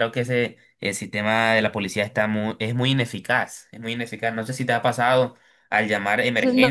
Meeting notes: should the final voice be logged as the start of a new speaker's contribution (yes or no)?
yes